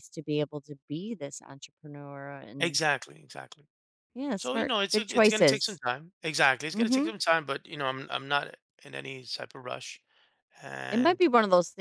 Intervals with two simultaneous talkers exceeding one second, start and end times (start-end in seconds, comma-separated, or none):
4.3-5.8